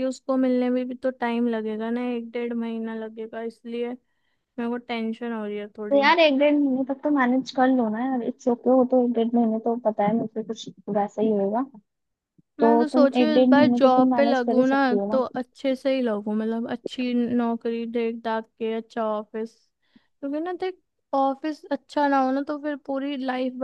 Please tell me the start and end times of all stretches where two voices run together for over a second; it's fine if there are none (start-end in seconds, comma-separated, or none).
12.6-15.1